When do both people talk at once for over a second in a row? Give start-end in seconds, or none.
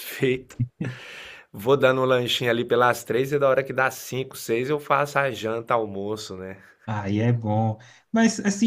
none